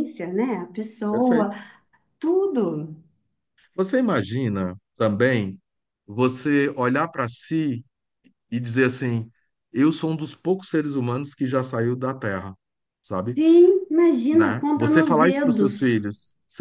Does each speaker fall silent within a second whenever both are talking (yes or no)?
no